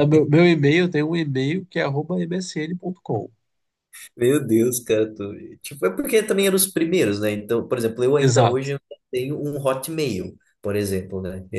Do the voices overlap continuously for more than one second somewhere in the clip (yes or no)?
no